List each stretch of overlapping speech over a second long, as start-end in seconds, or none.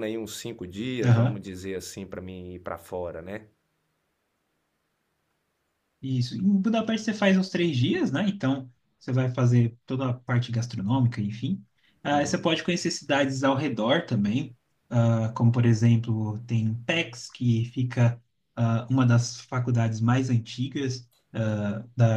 none